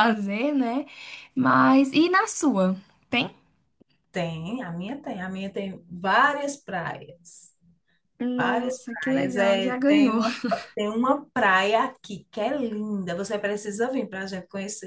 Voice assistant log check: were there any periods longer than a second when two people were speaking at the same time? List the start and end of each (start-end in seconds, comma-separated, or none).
8.4-10.2